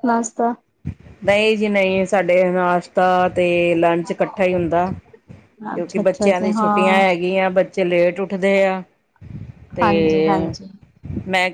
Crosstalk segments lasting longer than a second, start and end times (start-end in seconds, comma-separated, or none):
5.8-7.0